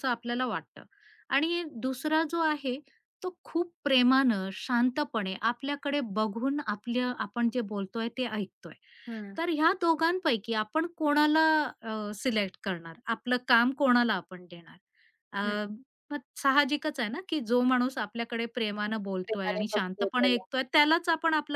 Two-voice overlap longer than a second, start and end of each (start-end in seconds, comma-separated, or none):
19.2-20.4